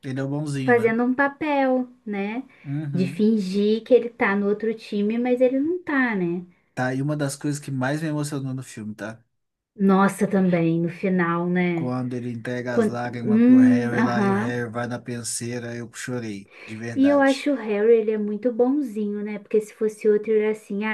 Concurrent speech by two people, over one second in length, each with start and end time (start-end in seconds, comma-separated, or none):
12.7-14.6